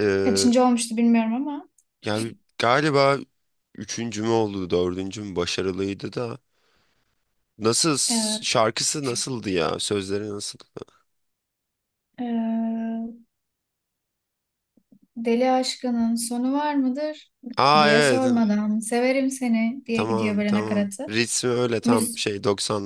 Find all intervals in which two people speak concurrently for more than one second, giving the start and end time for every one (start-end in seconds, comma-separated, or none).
19.9-21.1